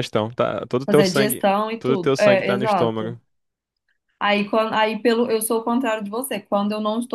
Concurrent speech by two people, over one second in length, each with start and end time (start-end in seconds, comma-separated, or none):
0.9-3.2